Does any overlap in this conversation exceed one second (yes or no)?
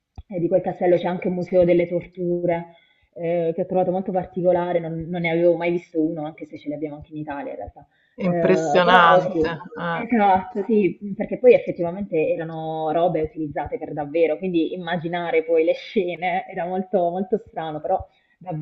yes